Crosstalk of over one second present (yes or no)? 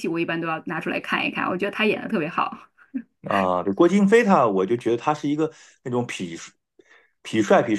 no